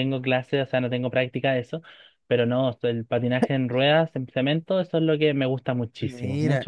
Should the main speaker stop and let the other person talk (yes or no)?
yes